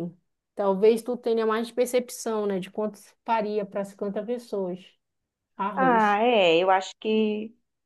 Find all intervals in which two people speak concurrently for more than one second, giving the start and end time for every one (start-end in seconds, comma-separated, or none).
none